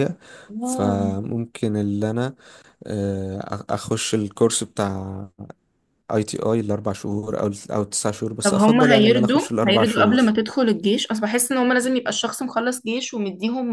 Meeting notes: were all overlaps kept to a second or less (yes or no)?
no